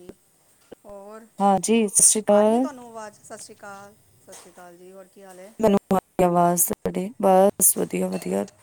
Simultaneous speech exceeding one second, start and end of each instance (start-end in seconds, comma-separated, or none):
none